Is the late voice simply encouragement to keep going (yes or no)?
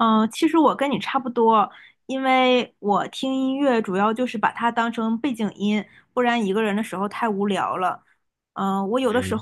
yes